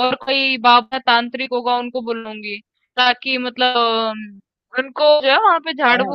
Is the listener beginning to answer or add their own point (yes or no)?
no